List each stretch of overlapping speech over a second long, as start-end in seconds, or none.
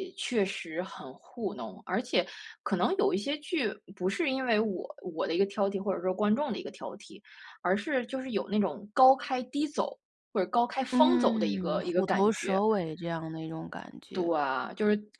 10.9-12.6